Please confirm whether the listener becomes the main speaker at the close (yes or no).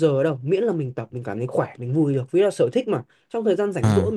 no